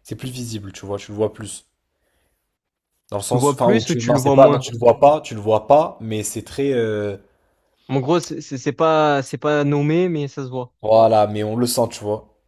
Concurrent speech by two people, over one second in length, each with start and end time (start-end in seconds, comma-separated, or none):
3.2-4.7